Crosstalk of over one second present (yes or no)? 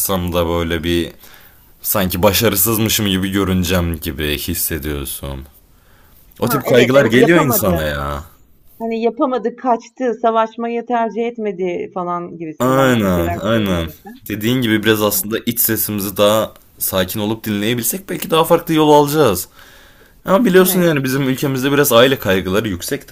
yes